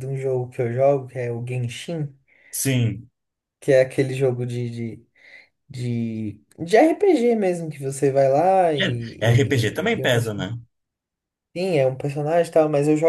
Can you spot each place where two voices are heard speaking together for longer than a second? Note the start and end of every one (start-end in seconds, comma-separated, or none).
9.2-10.5